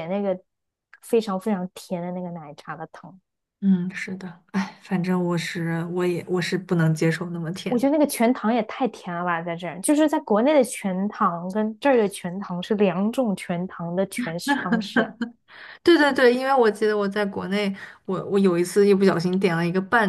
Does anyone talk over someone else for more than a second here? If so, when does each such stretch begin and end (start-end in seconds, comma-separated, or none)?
none